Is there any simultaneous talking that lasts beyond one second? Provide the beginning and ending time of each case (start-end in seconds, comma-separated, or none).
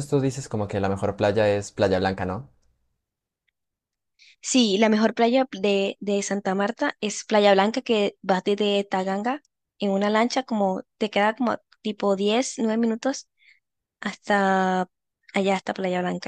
none